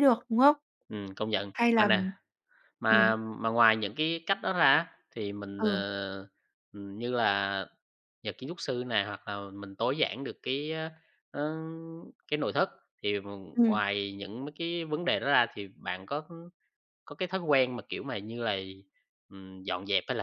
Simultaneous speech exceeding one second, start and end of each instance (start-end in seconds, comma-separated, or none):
none